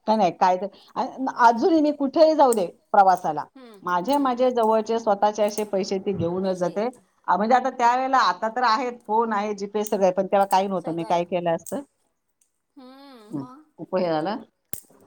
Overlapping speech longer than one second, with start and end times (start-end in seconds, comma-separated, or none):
none